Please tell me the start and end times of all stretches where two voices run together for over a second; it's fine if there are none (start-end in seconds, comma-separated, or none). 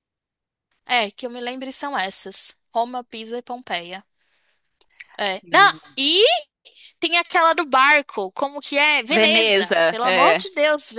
9.1-10.5